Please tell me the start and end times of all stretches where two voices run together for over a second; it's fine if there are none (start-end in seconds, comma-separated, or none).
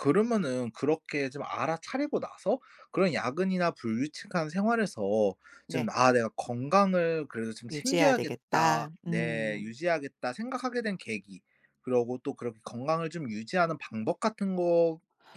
7.7-9.7